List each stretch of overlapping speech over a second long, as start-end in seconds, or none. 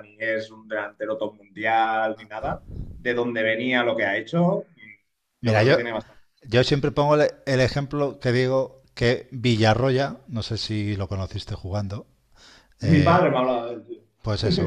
none